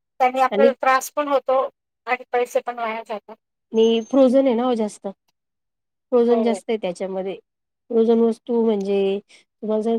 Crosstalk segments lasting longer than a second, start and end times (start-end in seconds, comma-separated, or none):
none